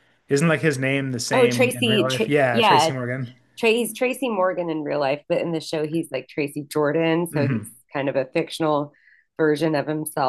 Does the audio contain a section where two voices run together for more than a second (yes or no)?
yes